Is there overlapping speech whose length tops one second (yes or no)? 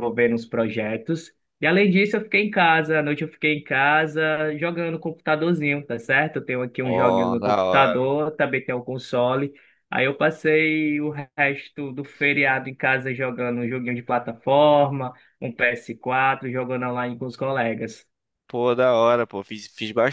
yes